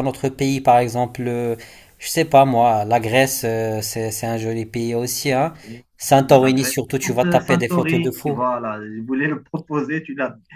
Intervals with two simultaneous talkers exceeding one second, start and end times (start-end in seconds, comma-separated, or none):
6.0-8.4